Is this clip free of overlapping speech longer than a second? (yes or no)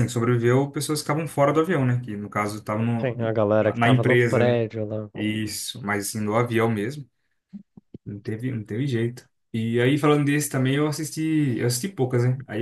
no